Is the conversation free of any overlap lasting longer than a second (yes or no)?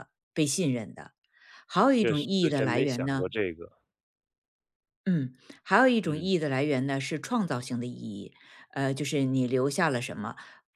no